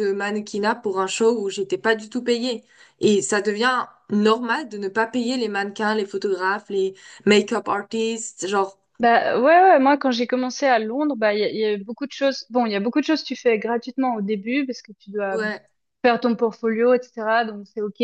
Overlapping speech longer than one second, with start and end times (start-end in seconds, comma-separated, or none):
none